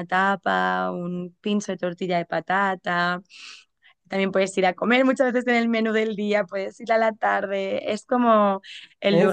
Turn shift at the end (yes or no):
no